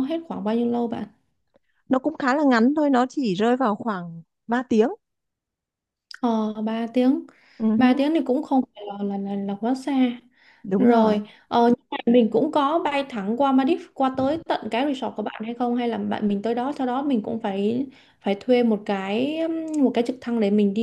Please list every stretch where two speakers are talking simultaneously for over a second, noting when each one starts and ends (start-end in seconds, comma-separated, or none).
none